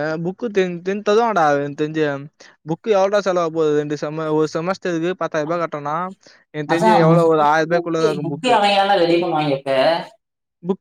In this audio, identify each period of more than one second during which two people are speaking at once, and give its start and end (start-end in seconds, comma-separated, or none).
6.7-8.6